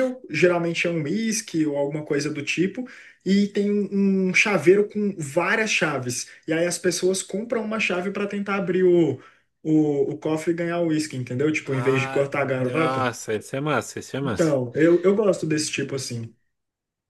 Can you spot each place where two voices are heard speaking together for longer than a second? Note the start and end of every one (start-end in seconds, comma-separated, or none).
11.7-13.1